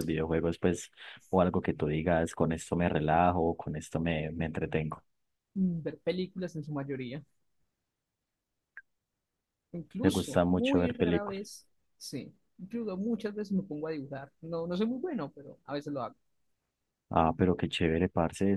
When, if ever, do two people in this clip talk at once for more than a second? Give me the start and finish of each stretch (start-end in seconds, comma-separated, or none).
10.0-11.4